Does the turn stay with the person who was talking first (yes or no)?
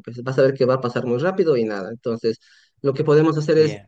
yes